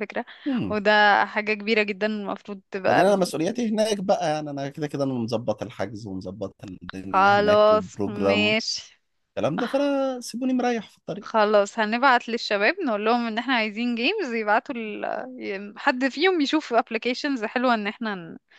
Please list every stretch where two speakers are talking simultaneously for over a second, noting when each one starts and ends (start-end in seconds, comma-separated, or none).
7.1-8.6